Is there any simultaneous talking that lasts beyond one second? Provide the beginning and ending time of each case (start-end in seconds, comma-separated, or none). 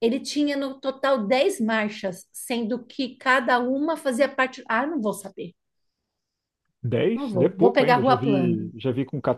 7.1-8.7